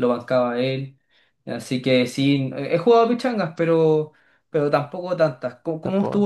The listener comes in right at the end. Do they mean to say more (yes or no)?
no